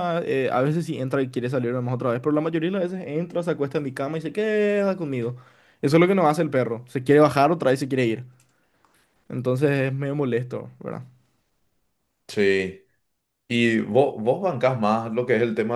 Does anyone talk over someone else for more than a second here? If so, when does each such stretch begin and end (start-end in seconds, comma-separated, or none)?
none